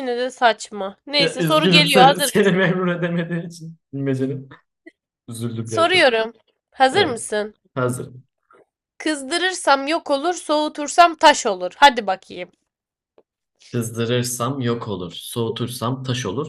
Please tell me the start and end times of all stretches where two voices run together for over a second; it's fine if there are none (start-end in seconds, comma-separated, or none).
1.2-2.6